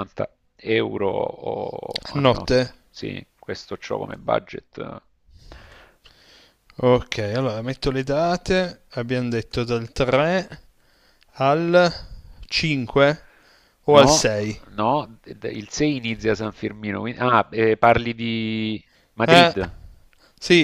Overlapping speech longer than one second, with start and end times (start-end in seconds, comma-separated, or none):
none